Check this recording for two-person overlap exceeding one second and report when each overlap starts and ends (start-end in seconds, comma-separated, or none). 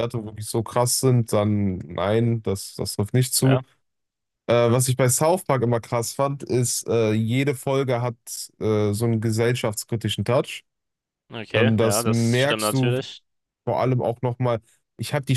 11.5-12.9